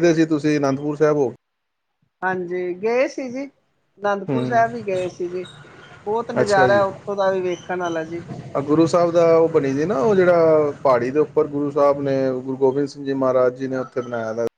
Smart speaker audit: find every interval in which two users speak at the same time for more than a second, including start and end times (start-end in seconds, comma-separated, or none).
none